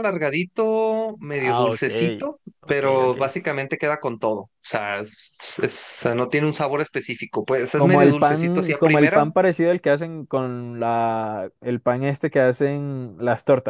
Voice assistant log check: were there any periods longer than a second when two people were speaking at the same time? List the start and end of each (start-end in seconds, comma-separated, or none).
7.7-9.3